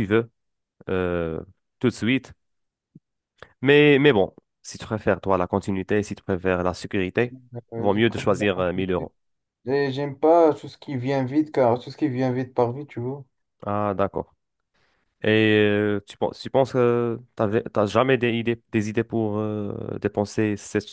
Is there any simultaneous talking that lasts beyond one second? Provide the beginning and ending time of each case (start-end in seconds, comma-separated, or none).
7.8-9.1